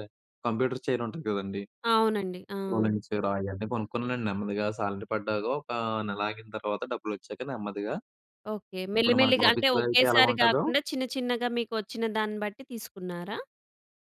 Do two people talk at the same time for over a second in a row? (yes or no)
yes